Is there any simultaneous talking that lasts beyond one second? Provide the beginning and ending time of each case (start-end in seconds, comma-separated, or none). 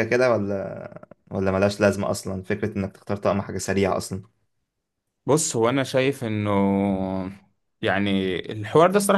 none